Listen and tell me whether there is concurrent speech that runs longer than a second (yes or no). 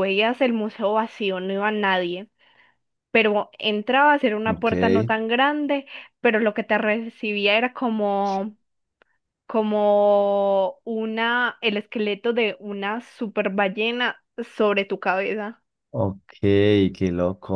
no